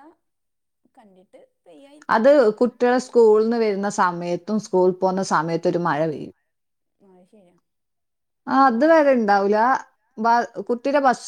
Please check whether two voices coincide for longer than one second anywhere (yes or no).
no